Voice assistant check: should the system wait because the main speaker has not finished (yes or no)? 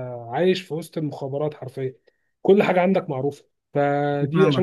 no